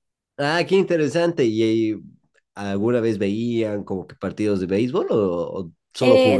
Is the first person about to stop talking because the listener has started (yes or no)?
yes